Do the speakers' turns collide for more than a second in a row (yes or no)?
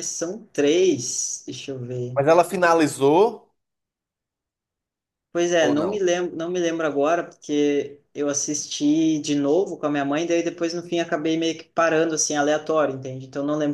no